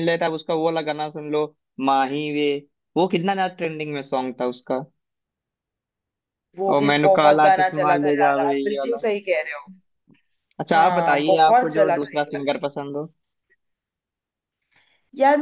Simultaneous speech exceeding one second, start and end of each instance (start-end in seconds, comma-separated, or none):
6.7-9.0, 10.7-12.4